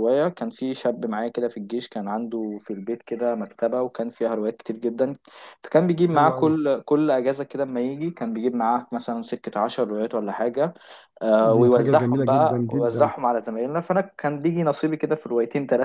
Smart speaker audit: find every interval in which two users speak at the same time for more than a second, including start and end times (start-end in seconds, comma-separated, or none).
11.4-13.1